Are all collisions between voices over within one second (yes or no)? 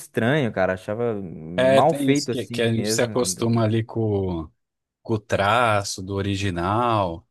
no